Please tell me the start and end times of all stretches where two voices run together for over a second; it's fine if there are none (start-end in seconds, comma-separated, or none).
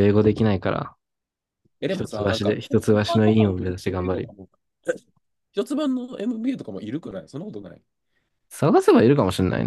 1.9-4.3